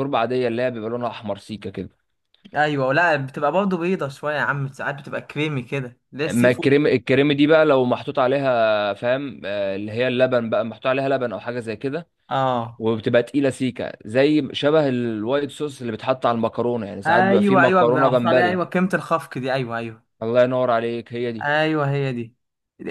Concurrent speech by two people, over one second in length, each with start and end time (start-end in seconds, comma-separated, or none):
17.1-18.6